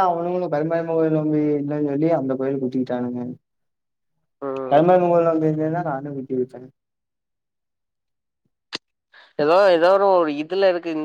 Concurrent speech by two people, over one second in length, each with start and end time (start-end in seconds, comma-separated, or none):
none